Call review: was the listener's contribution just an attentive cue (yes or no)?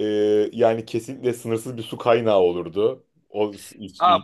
no